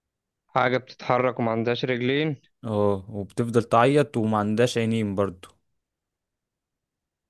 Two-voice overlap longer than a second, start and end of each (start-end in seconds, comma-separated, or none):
none